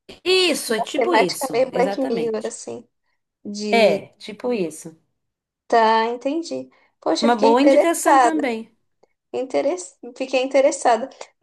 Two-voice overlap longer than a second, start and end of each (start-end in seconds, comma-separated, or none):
0.8-2.5, 7.2-8.5